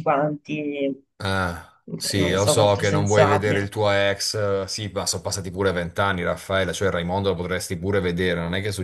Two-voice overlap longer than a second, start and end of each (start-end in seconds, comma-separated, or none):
2.2-3.6